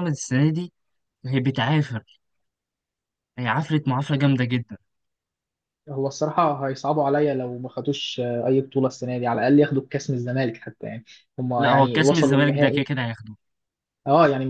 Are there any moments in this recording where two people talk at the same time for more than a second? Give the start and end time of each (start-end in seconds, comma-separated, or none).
11.6-12.8